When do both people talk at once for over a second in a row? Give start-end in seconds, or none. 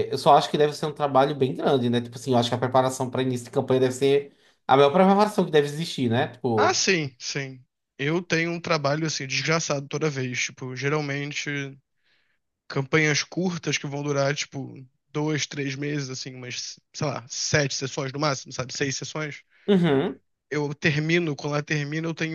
none